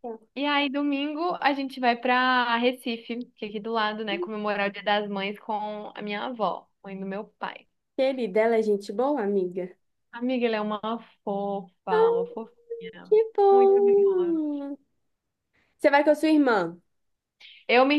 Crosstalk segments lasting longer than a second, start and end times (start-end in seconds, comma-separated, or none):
13.1-14.4